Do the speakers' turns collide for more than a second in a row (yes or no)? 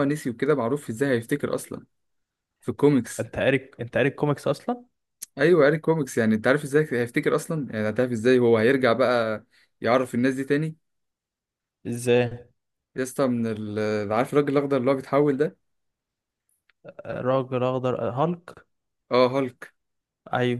no